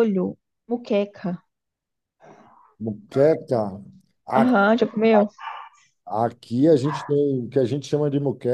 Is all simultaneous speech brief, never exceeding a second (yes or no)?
yes